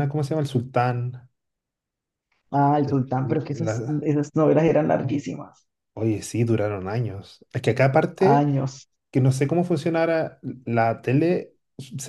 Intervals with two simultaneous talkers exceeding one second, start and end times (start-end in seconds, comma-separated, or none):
none